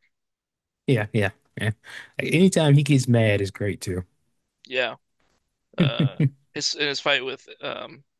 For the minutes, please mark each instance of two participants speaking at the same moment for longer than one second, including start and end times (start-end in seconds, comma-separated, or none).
none